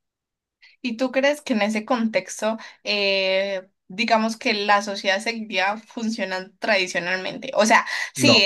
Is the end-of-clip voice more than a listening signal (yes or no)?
no